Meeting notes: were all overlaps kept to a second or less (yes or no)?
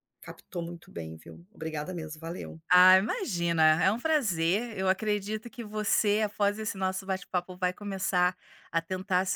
yes